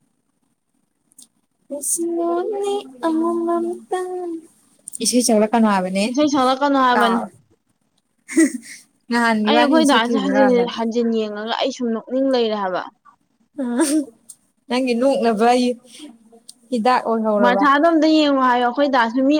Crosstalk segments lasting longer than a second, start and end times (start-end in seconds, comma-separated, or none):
9.5-10.7